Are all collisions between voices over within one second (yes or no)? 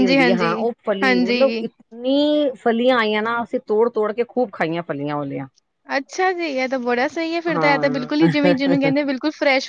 no